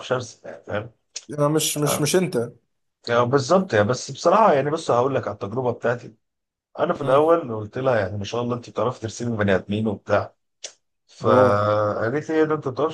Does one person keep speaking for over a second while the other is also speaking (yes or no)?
no